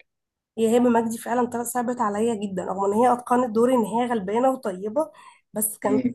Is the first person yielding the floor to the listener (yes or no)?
no